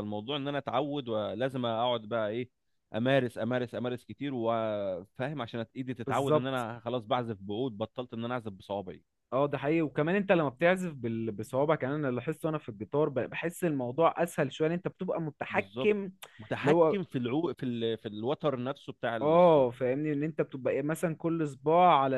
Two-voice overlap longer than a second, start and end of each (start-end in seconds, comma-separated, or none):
none